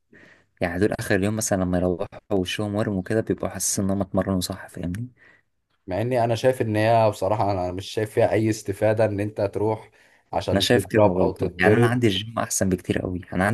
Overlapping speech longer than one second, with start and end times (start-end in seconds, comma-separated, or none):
10.5-12.0